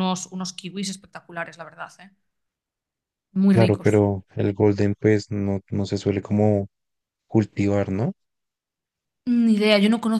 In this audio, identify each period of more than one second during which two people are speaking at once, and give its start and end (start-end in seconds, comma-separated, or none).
none